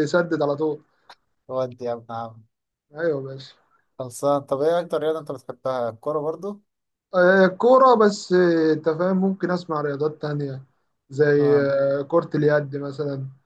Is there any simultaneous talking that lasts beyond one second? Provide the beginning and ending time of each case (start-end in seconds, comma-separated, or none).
none